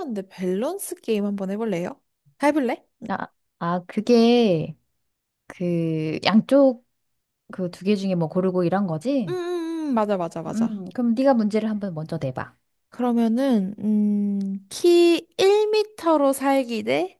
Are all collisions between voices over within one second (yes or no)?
yes